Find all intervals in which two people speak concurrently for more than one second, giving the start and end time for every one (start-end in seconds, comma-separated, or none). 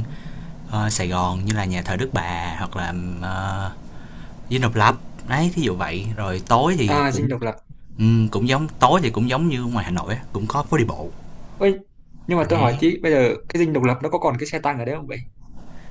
none